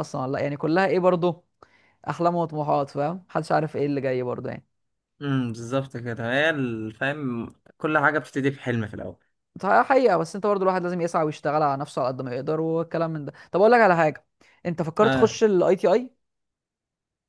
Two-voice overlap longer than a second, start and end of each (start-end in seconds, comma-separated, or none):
none